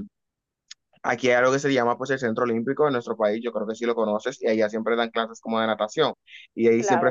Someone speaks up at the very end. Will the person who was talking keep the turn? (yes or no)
yes